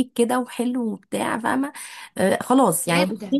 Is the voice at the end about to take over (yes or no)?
no